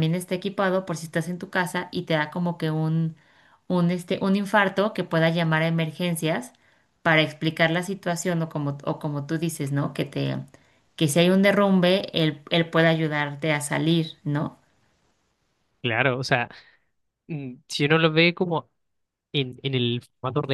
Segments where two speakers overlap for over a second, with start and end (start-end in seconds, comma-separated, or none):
none